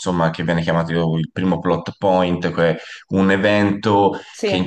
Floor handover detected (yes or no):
no